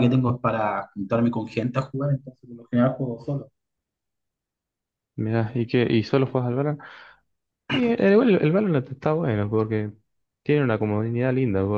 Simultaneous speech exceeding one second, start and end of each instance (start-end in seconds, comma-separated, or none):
none